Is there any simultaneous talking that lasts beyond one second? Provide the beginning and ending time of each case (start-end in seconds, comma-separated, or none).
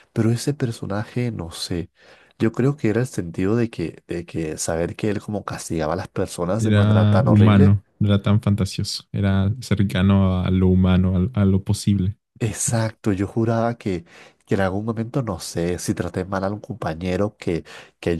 6.6-7.8